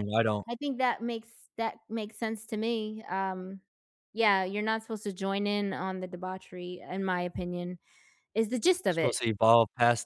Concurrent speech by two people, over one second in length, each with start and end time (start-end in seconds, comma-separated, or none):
none